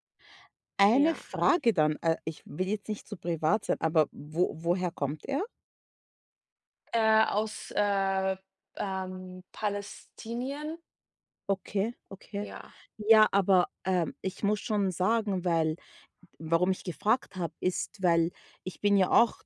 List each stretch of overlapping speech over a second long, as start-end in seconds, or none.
none